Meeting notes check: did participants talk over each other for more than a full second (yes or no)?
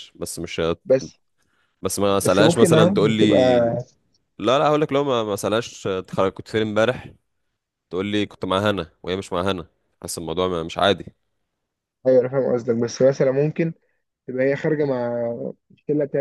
yes